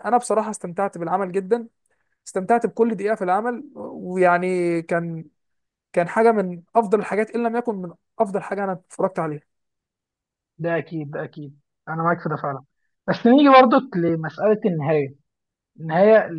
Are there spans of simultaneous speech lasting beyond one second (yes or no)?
no